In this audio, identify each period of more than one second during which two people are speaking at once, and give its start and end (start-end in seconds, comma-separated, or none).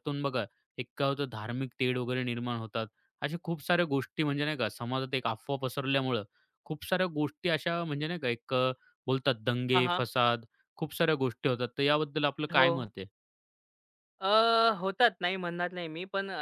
none